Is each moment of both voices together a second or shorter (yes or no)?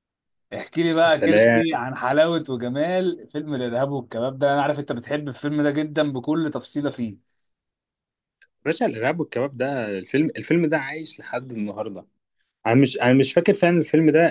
yes